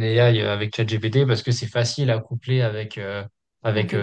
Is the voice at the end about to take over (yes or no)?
no